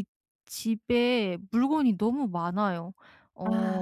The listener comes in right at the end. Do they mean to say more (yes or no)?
no